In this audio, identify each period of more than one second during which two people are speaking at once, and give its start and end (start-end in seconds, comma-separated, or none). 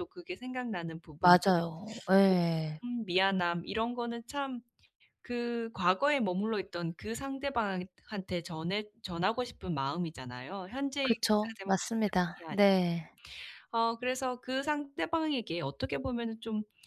11.0-12.6